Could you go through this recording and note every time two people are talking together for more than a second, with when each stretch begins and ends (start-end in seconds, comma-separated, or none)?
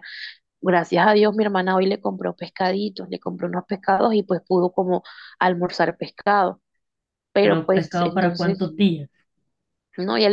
7.4-8.7